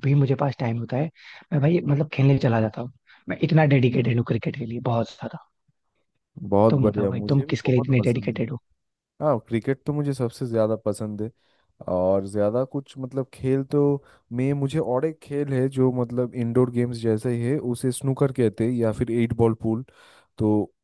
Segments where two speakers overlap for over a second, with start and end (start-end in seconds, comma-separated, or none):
6.7-8.4